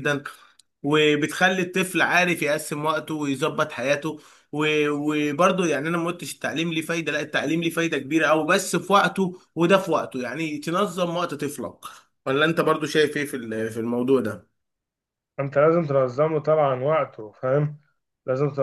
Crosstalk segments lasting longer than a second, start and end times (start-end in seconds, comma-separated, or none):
none